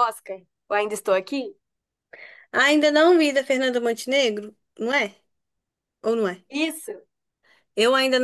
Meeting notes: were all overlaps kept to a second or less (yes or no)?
yes